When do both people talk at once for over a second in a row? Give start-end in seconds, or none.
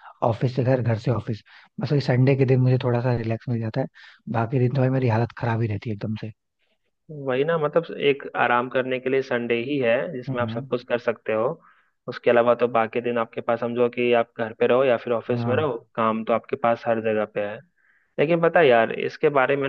none